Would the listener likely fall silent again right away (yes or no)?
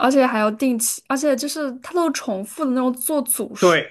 no